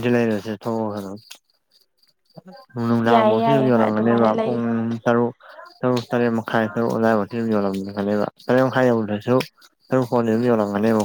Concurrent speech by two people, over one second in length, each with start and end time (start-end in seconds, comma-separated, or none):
3.1-4.6